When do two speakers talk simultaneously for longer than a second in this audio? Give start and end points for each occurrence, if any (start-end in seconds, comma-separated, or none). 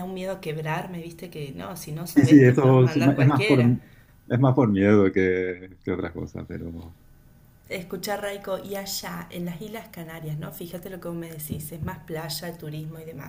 2.1-3.6